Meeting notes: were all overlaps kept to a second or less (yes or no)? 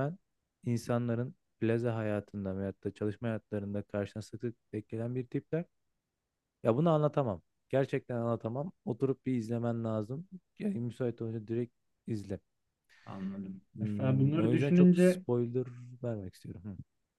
no